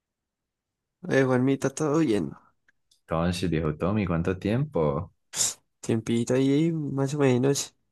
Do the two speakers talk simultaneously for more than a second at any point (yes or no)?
no